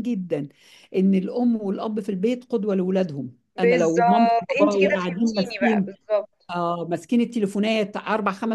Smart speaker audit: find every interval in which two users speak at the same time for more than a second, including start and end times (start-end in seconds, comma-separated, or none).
3.6-5.9